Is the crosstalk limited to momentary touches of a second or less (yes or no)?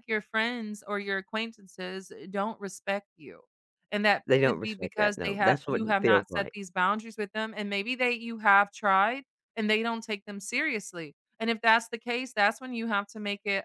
no